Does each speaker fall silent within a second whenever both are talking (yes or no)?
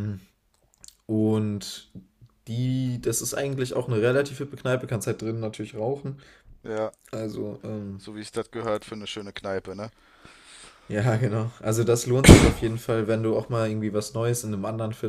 yes